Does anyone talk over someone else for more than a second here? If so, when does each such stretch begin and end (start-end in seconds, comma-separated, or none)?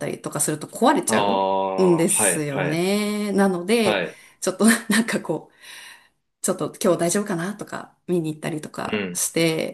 1.1-2.8